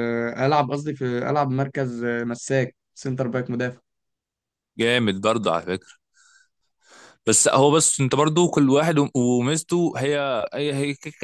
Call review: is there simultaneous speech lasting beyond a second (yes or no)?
no